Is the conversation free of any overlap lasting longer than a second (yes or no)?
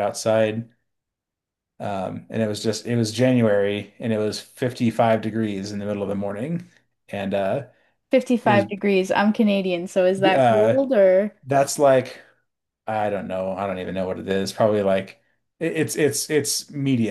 yes